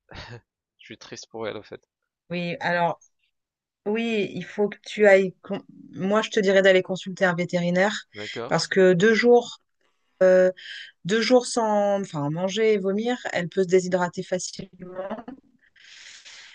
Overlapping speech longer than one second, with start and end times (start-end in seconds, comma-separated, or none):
none